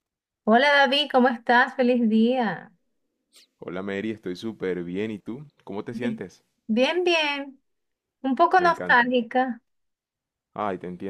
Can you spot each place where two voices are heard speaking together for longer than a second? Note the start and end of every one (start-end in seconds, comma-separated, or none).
none